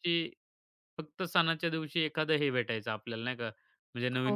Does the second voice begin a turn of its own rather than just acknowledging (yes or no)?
no